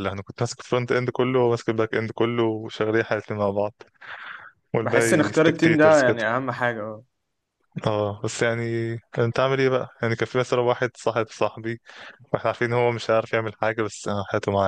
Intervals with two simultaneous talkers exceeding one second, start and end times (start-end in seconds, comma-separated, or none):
4.8-6.3